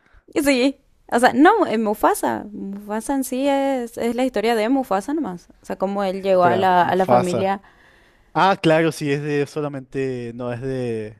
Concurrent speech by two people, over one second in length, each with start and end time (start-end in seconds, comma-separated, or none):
6.3-7.6